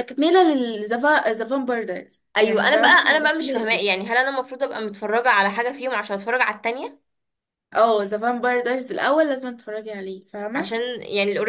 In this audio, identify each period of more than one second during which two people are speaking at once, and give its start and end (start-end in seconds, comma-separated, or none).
2.4-4.0